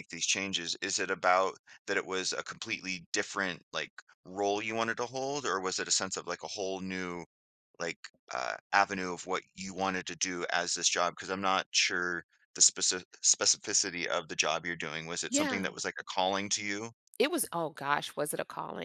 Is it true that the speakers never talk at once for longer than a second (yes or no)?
yes